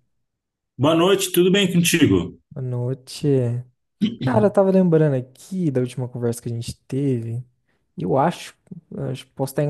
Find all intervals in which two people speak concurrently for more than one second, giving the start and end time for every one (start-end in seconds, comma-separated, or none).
none